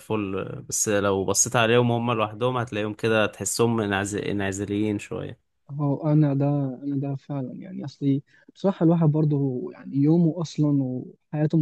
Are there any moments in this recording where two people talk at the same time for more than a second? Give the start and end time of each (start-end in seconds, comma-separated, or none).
none